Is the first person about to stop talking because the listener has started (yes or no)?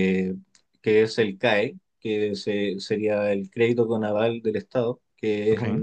no